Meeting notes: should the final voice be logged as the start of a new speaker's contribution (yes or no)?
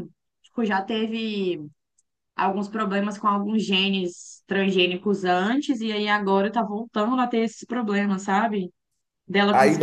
yes